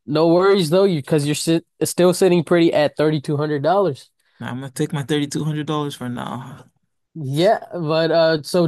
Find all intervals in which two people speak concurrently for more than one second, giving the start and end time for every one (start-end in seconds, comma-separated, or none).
none